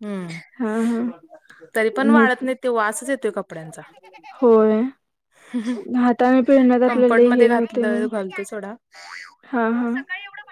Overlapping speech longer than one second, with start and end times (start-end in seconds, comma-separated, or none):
6.8-8.1